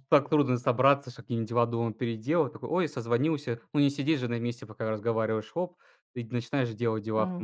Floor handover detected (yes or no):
yes